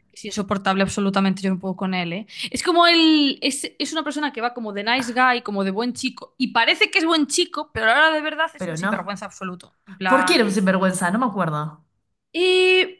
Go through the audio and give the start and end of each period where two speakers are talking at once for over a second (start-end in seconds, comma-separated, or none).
none